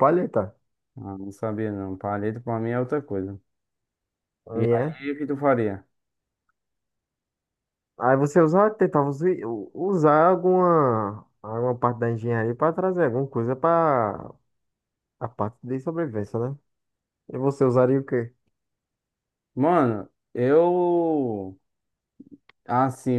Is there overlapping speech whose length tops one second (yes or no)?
no